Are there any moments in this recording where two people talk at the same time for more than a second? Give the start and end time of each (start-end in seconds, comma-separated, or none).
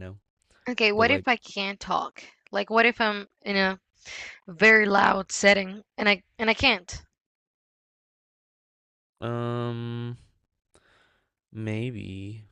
none